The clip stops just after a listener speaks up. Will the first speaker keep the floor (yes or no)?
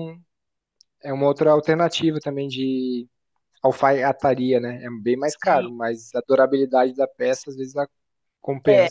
no